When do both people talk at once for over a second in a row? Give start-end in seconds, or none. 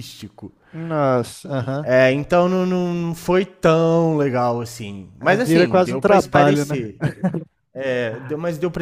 5.2-6.9